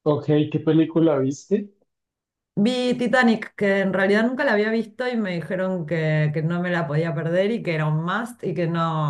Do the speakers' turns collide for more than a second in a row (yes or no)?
no